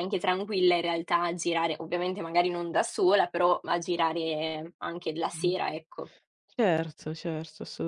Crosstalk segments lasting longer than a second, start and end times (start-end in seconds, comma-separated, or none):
none